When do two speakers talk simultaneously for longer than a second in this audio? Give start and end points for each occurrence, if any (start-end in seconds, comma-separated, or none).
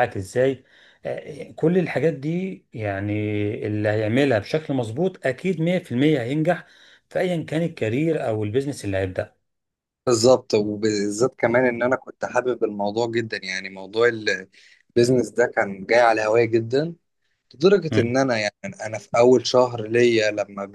none